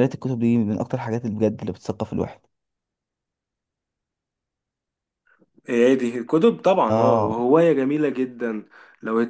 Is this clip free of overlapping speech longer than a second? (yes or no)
yes